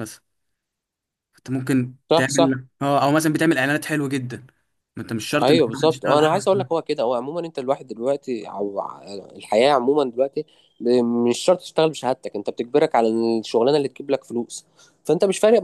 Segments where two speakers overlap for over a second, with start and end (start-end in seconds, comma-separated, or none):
5.4-6.7